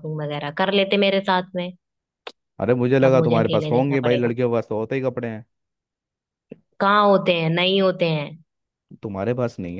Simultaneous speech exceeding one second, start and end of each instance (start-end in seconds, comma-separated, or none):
3.0-4.3